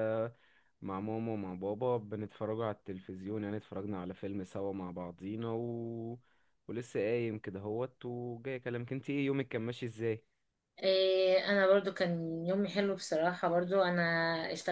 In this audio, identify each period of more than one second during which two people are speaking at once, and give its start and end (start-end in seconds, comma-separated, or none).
none